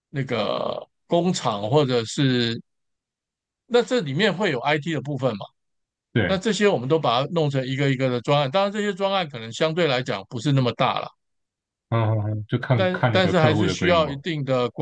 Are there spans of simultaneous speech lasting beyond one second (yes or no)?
yes